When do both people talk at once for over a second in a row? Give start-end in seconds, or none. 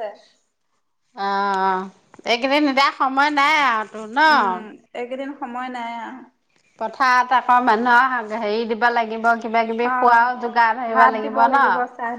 none